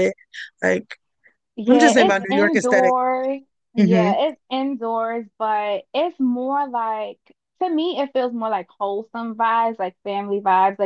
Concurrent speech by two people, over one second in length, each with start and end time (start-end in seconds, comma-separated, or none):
1.7-2.9